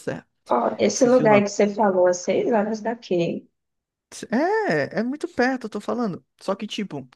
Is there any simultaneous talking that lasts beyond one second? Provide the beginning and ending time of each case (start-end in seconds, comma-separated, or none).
none